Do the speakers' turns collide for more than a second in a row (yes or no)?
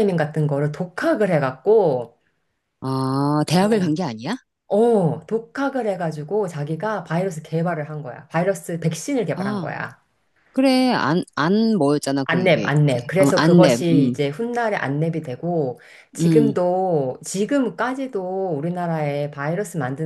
yes